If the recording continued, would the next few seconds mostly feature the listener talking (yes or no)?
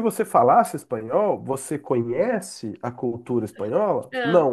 no